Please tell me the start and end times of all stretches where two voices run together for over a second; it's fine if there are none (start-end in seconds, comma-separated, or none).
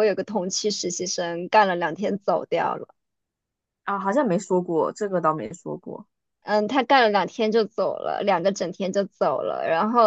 none